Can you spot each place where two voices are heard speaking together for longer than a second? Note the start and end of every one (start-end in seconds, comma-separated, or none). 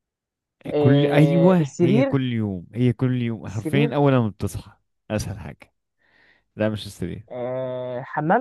0.8-2.1